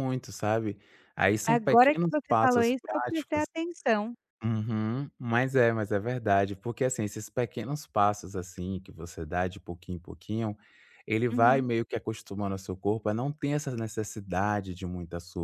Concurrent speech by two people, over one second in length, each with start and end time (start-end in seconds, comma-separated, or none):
1.5-3.5